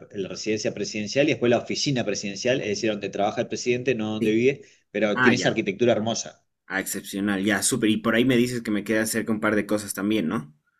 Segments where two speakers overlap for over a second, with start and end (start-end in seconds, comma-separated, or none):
none